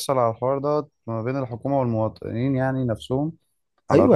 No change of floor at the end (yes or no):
no